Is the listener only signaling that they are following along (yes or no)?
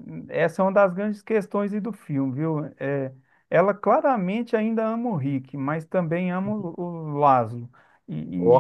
yes